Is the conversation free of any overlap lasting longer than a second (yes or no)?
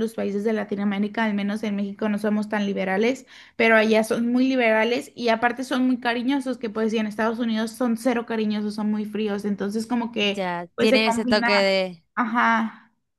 no